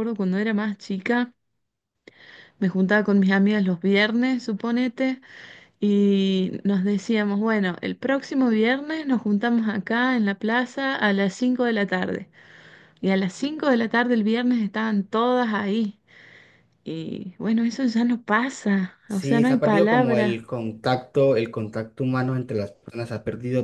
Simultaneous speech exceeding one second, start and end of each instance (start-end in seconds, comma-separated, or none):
19.1-20.4